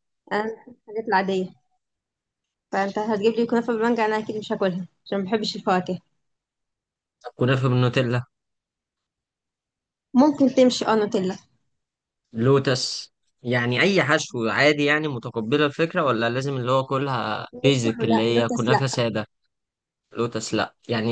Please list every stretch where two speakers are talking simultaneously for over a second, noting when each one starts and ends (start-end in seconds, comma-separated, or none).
17.5-19.0